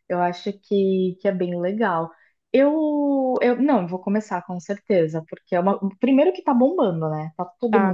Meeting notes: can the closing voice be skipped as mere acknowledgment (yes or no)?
no